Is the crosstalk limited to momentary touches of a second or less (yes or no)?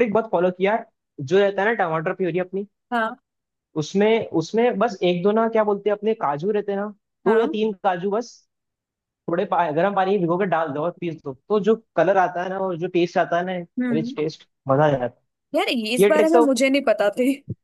yes